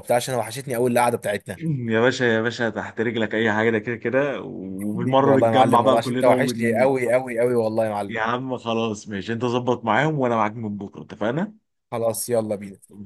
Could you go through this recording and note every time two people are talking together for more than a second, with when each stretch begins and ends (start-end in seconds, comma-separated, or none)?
4.9-6.9